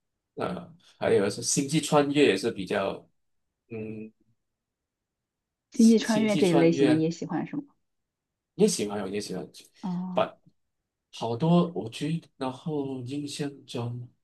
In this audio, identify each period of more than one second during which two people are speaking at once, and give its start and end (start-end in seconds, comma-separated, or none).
5.7-7.1